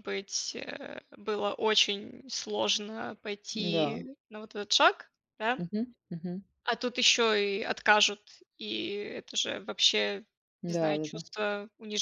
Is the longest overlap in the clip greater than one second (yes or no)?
no